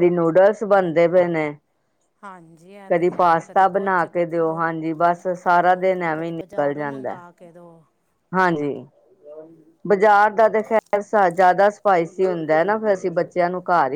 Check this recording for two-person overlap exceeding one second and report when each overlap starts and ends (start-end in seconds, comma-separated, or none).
2.9-4.6